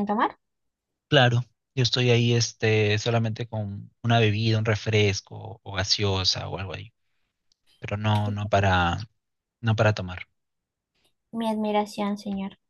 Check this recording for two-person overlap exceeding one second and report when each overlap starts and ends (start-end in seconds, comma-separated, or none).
none